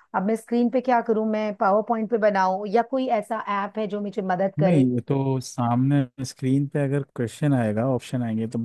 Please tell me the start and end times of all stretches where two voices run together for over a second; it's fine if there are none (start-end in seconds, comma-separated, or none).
none